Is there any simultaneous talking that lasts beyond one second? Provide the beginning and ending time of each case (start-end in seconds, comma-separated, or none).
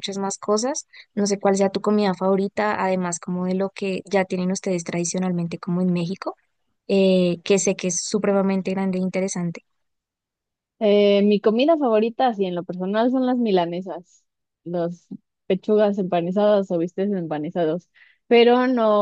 none